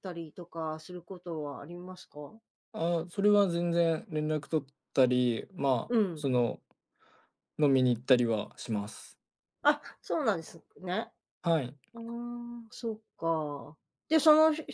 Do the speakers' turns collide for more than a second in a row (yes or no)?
no